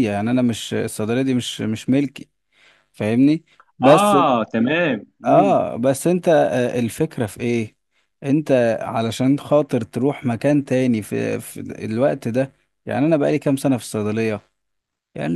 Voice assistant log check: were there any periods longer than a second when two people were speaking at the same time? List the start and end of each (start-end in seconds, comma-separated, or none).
none